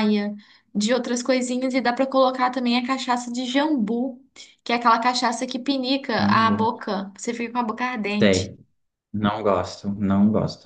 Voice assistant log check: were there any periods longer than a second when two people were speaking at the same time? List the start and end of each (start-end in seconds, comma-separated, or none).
none